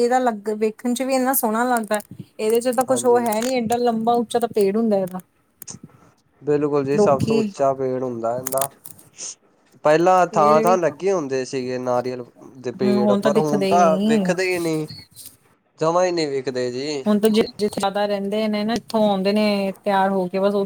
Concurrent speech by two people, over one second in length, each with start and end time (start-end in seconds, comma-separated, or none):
12.8-14.3